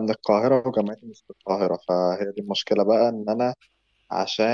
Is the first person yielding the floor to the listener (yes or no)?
no